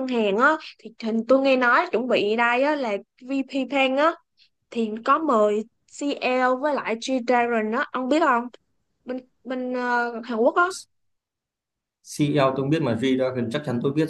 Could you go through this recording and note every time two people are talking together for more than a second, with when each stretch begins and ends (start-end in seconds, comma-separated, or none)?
none